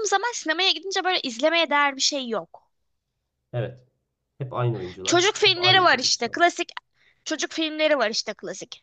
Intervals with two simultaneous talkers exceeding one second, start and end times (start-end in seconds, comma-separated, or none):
5.0-6.4